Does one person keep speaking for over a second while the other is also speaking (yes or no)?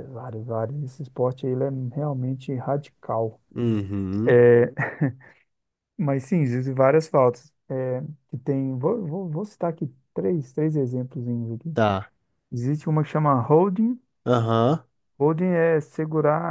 no